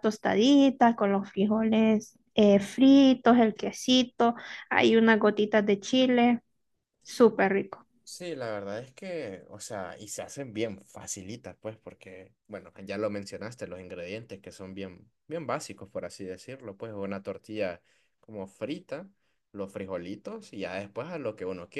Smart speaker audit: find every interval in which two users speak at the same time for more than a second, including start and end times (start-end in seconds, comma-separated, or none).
none